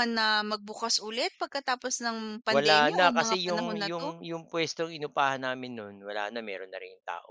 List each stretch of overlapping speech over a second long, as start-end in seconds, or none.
2.5-4.1